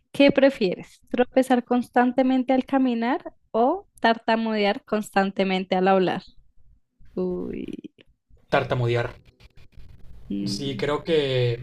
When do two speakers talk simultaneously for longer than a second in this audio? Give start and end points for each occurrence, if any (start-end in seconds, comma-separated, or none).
none